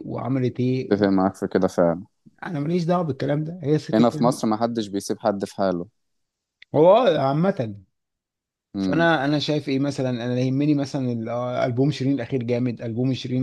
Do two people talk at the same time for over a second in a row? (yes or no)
no